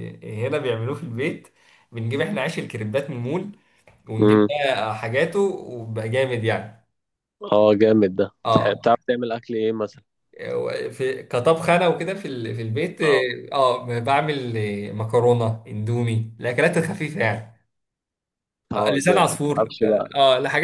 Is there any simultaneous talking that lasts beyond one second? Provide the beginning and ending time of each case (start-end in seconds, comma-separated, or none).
18.7-20.1